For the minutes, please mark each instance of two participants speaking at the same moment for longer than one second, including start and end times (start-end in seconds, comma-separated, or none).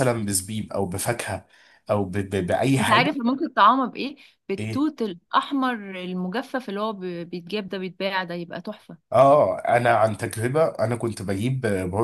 none